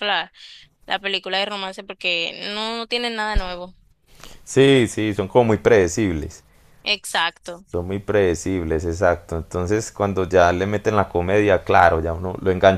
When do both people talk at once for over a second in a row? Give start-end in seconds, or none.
none